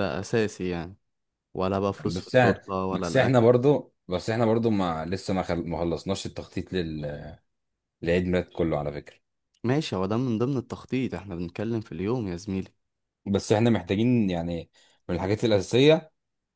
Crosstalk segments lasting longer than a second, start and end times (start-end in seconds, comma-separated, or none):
2.1-3.5